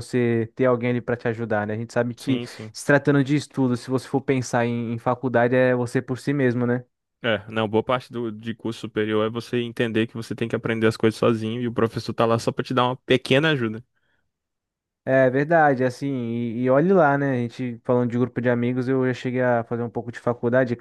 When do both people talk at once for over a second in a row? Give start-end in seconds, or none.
none